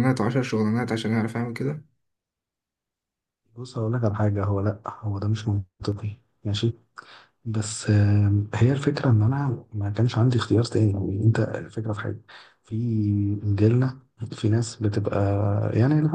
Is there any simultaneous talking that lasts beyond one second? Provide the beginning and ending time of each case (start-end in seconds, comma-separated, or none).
none